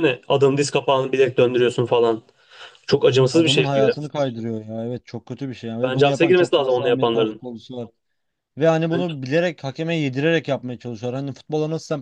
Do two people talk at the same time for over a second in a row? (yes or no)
yes